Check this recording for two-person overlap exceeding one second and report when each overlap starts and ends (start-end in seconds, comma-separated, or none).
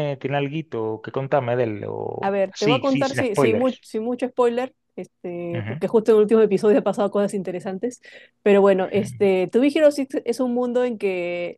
2.2-3.8